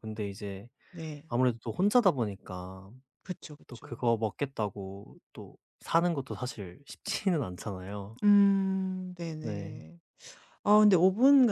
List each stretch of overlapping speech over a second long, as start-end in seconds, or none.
none